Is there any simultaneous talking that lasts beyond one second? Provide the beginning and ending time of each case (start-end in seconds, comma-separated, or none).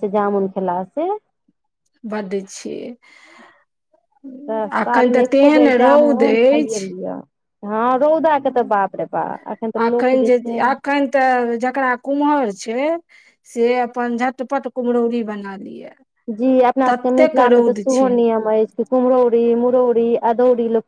4.8-6.8